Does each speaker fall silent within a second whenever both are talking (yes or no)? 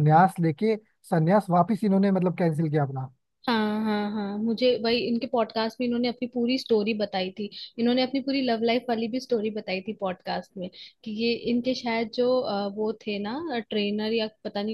yes